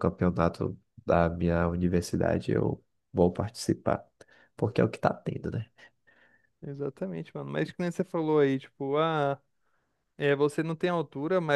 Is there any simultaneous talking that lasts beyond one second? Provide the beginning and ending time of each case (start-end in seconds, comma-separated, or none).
none